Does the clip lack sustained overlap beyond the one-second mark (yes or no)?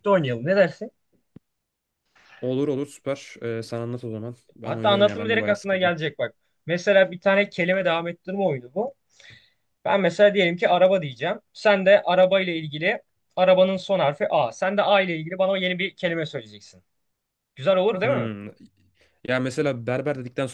no